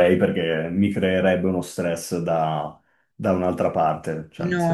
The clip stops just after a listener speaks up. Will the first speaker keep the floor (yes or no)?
no